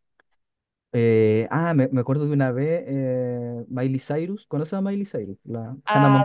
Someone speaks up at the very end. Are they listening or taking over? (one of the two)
taking over